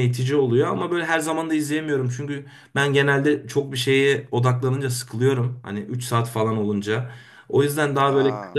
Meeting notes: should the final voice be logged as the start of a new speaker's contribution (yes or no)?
no